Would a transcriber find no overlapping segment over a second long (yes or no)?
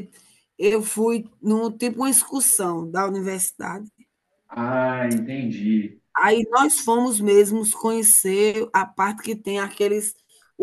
yes